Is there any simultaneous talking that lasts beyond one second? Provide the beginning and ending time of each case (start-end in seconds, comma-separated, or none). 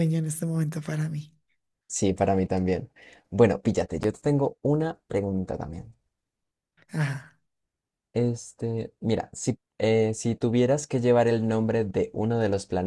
none